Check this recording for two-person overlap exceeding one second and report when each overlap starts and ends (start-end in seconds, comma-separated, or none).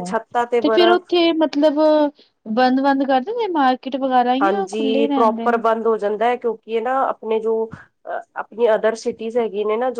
none